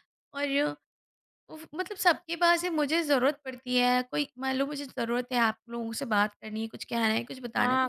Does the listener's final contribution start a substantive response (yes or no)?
yes